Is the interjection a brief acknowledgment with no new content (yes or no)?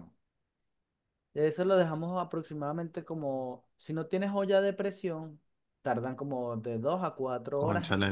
no